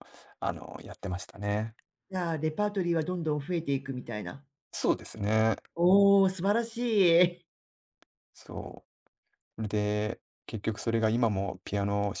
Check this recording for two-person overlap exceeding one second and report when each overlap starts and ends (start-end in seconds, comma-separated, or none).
none